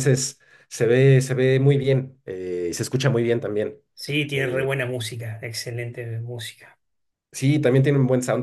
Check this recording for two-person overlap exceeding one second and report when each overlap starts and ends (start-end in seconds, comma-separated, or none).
none